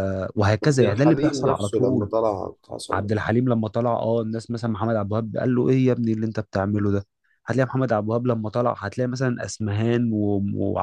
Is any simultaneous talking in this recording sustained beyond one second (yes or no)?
yes